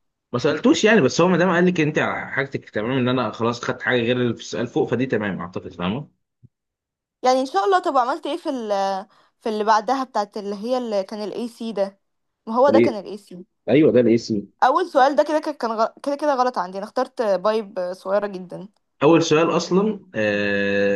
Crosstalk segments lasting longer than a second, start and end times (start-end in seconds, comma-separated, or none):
none